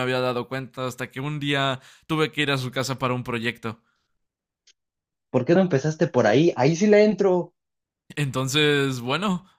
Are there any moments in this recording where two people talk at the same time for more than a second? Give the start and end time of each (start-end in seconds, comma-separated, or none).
none